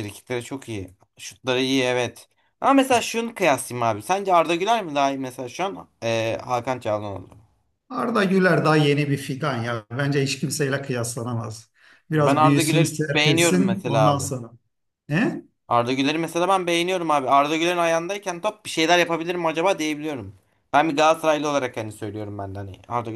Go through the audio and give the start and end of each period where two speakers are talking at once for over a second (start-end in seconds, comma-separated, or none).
12.1-14.3